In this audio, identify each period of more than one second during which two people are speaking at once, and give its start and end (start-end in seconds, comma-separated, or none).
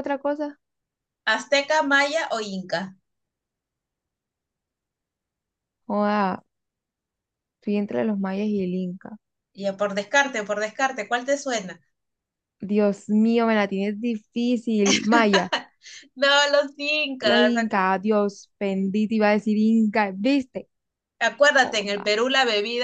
none